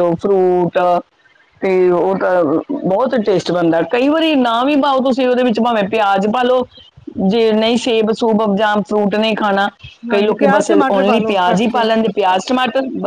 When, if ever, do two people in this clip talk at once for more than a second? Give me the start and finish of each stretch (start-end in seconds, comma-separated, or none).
10.1-11.9